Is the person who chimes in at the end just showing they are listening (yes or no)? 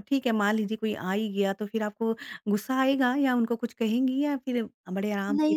no